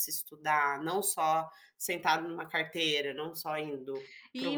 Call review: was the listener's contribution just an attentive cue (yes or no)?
no